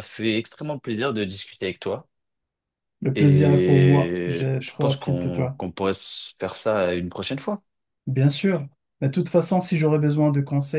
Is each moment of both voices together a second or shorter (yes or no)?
no